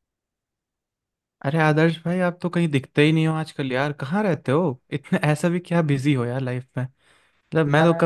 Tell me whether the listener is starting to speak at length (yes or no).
no